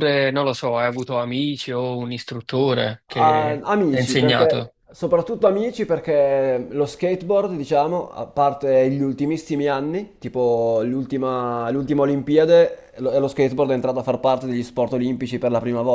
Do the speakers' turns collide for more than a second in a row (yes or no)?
yes